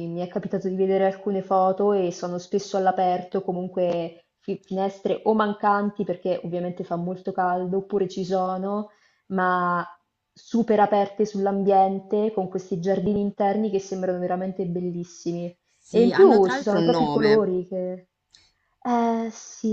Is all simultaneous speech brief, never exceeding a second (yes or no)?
no